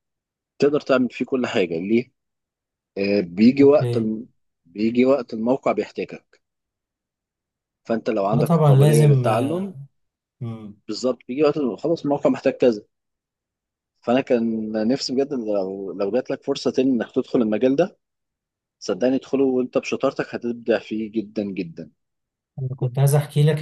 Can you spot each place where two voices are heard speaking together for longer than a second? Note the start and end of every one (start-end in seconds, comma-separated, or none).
8.3-9.7